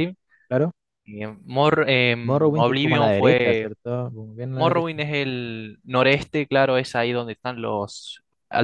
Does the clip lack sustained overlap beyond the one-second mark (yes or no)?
no